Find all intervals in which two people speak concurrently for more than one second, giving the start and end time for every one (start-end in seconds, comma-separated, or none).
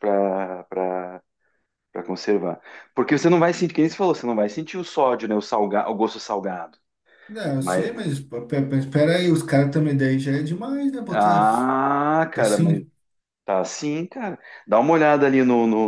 none